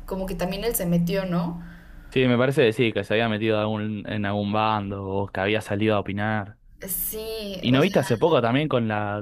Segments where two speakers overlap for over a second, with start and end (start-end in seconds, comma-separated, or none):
none